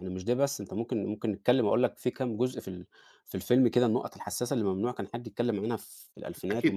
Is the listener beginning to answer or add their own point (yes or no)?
yes